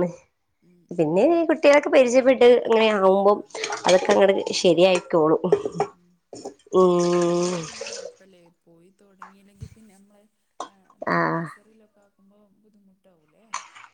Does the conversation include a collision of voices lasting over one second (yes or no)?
no